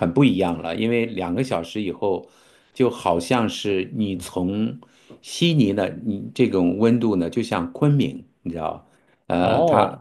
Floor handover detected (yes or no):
no